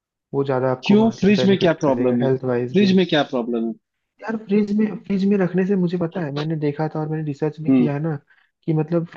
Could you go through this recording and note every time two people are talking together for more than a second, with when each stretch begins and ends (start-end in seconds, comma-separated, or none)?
0.8-2.8